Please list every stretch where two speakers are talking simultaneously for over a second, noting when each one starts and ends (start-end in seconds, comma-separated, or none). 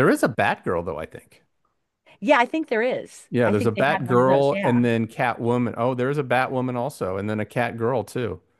3.3-4.8